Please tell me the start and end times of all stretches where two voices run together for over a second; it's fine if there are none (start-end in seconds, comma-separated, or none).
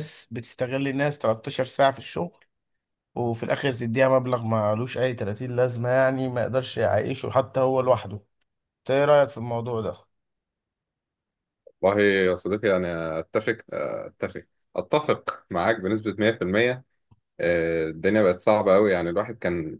none